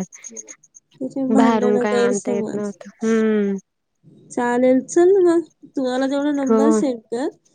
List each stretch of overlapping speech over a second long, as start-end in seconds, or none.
1.4-2.7